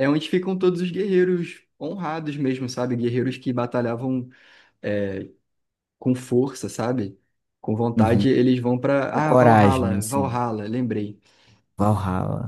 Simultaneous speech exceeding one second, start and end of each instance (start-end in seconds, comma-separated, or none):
9.1-10.4